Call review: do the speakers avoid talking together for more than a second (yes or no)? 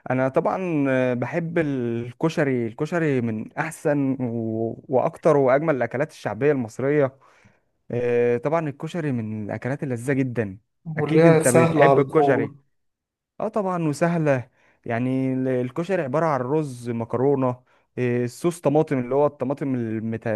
no